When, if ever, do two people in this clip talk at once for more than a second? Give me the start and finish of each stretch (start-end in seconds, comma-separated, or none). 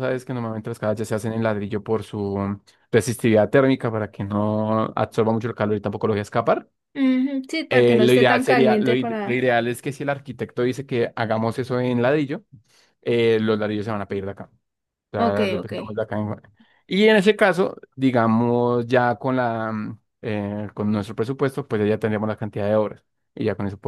7.7-9.5